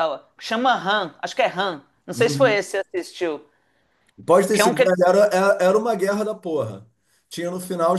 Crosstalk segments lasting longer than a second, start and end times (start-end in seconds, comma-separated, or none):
none